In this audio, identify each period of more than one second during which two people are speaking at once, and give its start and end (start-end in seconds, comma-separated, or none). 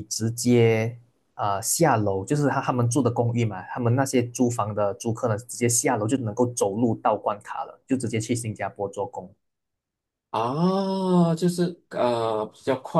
none